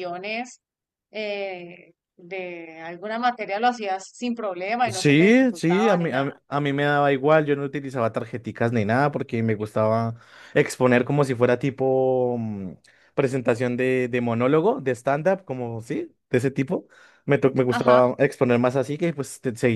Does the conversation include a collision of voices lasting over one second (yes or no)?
yes